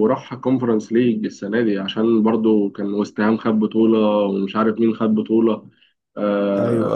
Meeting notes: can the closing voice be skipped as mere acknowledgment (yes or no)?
yes